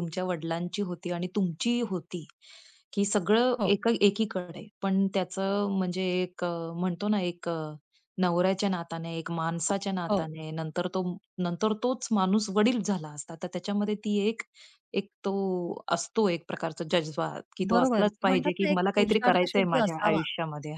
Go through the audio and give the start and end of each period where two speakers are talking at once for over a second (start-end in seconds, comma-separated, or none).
17.7-20.2